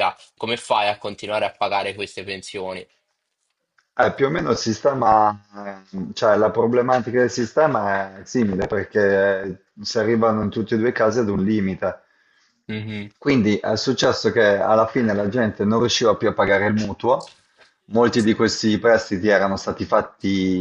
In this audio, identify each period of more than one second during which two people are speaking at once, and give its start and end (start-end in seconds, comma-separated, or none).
none